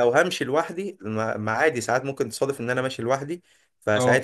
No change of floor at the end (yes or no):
yes